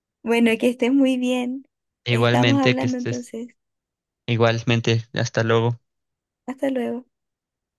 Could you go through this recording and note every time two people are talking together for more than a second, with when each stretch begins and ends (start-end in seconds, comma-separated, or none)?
2.1-3.3